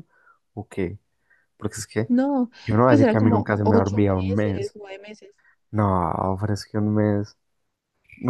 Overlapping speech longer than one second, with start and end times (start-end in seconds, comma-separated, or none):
2.9-4.8